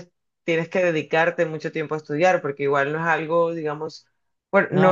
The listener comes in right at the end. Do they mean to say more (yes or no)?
no